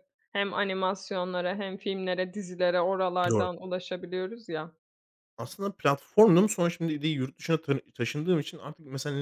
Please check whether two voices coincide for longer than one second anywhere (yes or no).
no